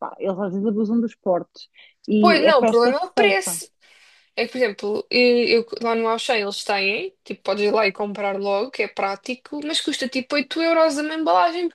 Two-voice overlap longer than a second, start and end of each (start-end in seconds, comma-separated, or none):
2.2-3.6